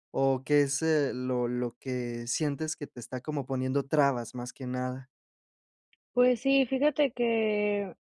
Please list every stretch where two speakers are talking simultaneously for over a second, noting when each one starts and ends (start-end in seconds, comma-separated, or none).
none